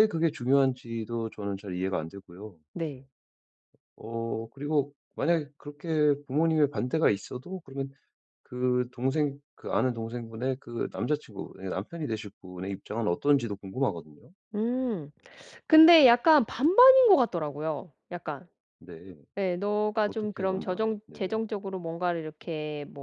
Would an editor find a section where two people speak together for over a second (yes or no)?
yes